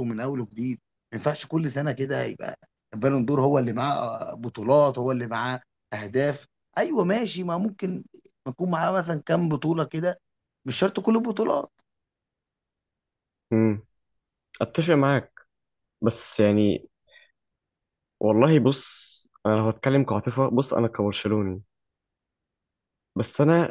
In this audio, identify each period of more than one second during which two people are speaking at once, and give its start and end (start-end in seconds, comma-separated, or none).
none